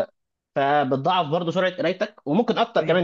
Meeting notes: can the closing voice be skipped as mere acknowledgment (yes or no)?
yes